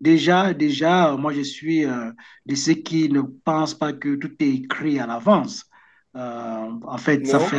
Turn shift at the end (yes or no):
no